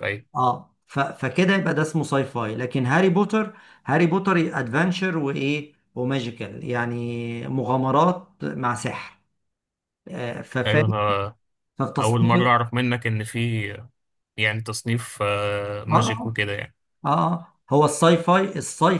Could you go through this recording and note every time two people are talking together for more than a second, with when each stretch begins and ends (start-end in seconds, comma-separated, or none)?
none